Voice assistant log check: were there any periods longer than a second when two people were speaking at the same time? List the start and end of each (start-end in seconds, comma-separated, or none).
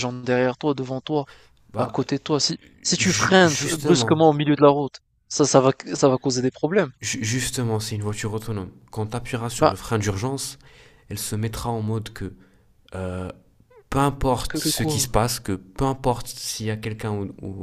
3.0-4.2